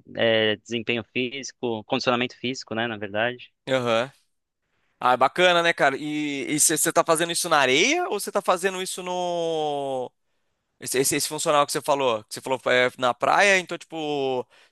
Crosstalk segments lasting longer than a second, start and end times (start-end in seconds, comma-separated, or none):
none